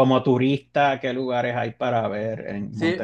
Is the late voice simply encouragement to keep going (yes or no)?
no